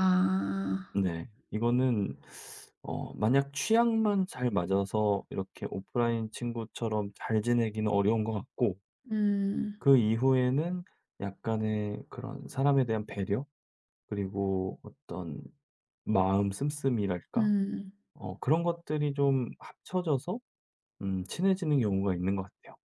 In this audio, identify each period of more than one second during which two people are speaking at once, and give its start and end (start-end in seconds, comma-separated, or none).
none